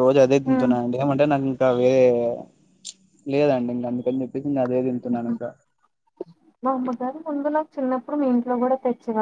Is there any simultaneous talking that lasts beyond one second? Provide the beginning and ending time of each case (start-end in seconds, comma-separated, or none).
none